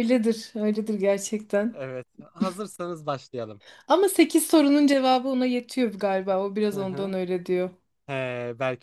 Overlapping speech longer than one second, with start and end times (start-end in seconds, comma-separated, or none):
none